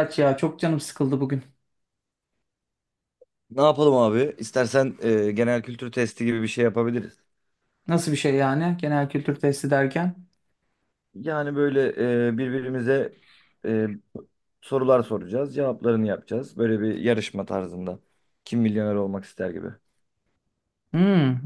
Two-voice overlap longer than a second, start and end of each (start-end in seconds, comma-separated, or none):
none